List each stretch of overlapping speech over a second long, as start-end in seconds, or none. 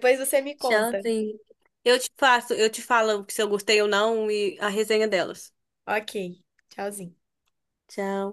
none